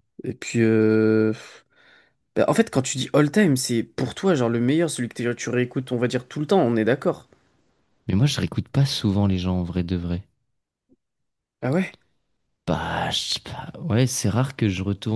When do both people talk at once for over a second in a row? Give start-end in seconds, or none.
none